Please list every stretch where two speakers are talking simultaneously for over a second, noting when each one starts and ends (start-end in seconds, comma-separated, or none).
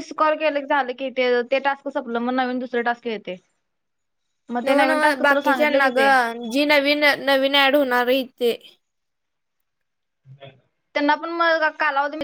none